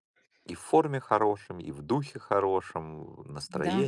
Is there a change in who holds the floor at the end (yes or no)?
yes